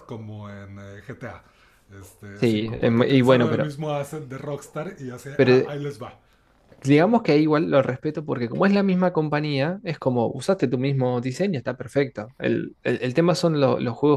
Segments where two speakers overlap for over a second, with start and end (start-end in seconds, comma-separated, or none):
2.4-3.7